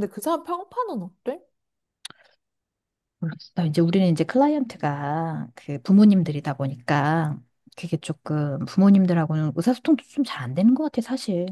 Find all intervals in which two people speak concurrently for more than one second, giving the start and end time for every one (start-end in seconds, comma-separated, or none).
none